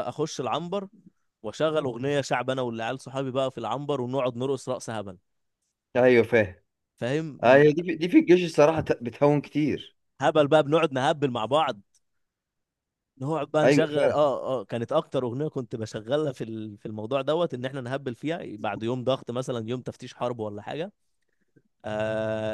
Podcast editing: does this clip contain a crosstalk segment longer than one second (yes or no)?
no